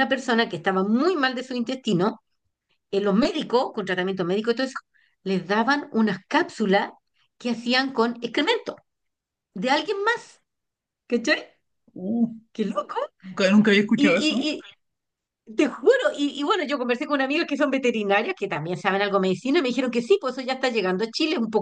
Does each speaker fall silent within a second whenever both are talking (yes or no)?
yes